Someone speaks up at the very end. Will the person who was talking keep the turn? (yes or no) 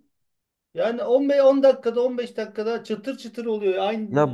no